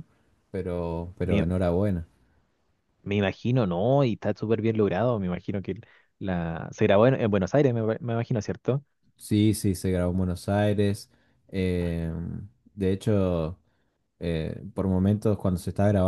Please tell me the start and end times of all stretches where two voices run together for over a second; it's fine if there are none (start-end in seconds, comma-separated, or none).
none